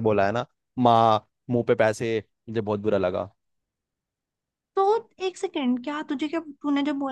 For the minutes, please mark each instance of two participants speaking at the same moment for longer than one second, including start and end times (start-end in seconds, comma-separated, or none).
none